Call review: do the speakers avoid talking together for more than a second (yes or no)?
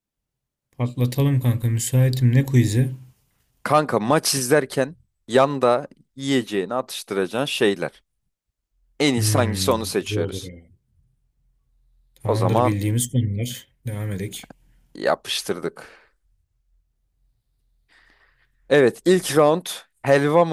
no